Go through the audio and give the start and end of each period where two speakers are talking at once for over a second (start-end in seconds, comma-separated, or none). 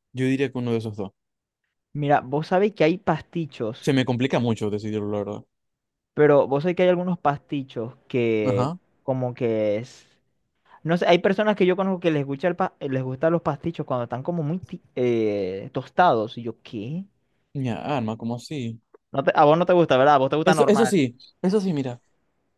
none